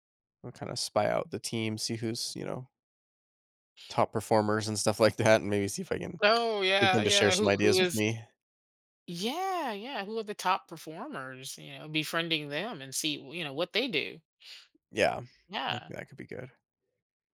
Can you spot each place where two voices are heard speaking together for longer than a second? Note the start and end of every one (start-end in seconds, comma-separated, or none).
6.8-8.0